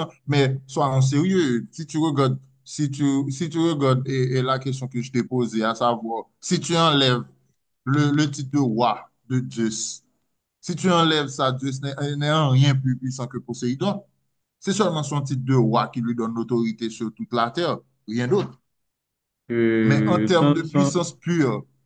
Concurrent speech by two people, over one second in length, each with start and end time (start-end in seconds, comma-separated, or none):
19.8-21.1